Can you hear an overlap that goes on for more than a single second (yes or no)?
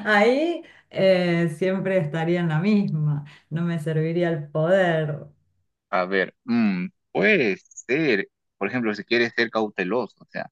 no